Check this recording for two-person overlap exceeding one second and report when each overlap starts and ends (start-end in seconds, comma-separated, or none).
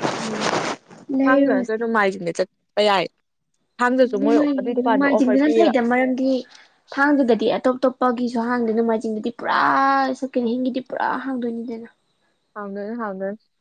4.0-5.7